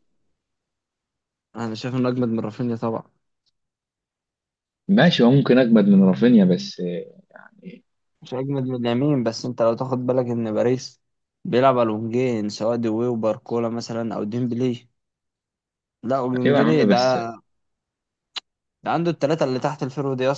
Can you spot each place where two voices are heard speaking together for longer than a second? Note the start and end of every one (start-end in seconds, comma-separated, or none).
none